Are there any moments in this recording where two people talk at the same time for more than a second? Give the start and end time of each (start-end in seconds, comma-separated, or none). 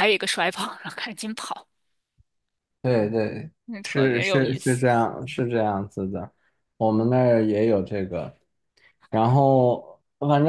3.6-4.8